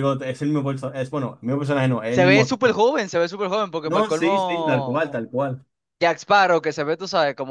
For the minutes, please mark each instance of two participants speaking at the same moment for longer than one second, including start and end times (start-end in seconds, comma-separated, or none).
3.8-5.0